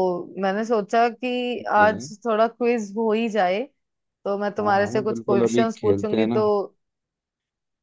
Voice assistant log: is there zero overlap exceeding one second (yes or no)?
no